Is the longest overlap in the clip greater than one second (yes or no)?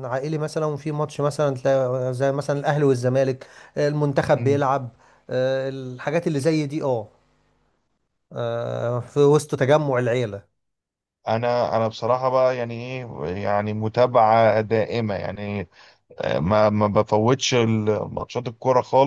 no